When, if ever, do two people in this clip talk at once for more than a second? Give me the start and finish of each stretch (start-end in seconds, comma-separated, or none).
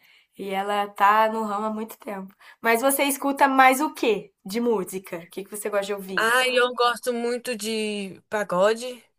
none